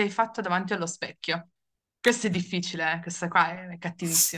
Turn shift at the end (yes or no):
yes